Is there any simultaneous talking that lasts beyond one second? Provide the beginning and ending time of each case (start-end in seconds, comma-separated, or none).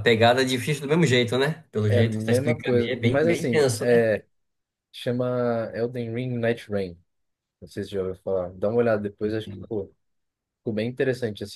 1.9-4.1